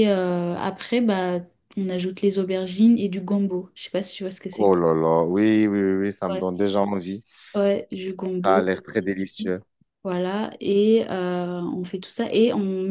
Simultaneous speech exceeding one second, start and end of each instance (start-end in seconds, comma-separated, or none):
none